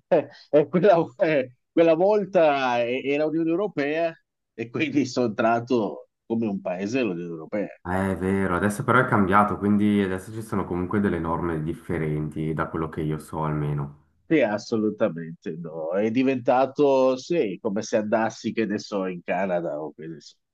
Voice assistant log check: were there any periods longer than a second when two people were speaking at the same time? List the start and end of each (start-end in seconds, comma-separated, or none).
none